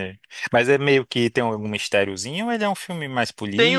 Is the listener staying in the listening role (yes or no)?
no